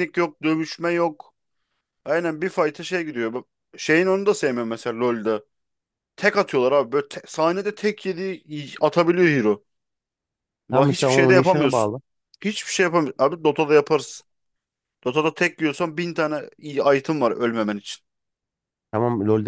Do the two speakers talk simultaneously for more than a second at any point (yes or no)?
yes